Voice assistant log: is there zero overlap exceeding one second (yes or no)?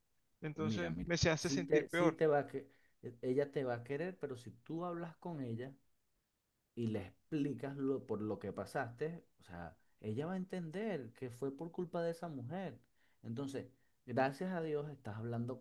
no